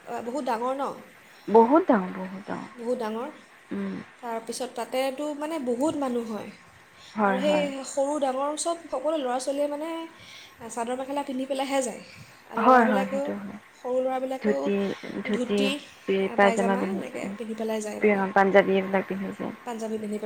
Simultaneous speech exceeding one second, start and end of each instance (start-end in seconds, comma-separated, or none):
16.4-18.2